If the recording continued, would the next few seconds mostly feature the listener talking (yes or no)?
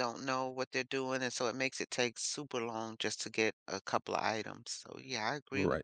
yes